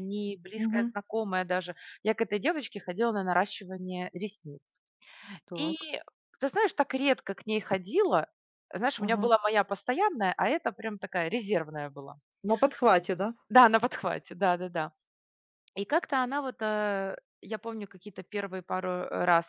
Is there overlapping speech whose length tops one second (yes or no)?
no